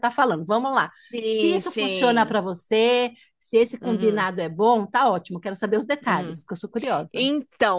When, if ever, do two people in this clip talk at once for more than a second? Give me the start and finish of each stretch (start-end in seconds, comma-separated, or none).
1.1-2.4